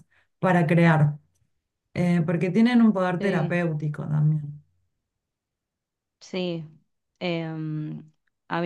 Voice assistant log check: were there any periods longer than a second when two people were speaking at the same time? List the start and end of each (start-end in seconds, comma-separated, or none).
none